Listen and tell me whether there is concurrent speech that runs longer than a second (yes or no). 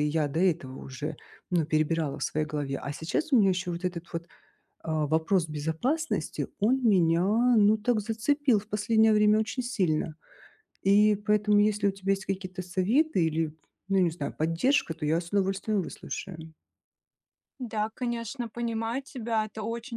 no